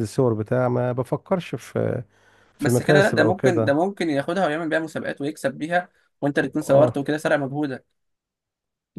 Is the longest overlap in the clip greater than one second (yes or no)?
yes